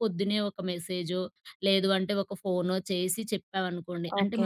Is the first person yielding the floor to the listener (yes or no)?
no